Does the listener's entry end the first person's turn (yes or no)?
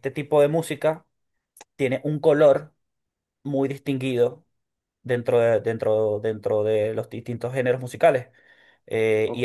yes